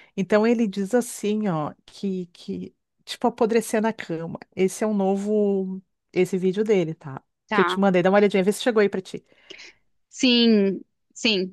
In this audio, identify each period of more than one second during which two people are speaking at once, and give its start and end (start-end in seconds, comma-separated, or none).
none